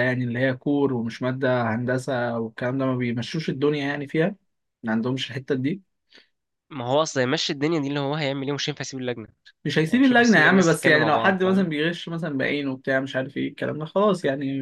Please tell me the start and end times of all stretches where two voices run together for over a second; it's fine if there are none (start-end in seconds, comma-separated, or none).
9.8-11.7